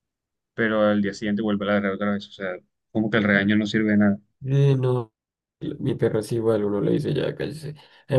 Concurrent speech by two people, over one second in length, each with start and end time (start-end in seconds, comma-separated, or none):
none